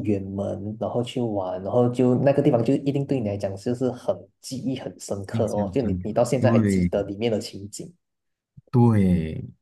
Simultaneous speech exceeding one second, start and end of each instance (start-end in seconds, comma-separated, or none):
5.3-6.9